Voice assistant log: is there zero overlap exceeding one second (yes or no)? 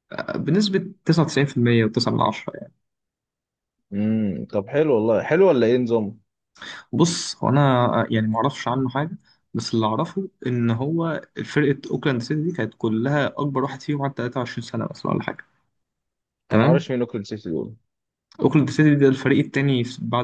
yes